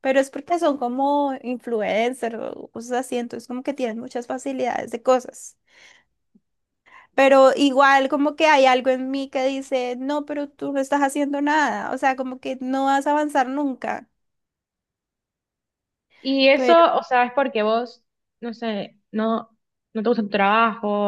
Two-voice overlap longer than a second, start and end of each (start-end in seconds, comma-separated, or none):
none